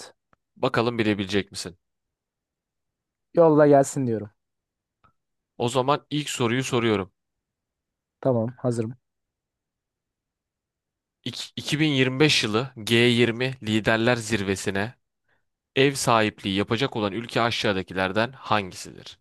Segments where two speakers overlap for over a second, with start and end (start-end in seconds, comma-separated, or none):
none